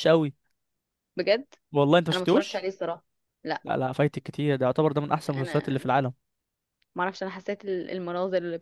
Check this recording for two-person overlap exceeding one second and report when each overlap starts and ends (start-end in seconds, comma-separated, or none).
none